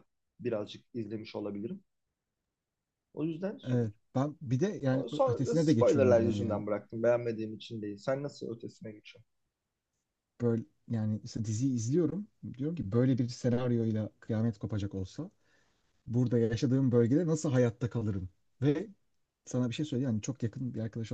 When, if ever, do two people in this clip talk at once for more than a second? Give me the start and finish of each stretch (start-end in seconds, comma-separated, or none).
4.9-6.6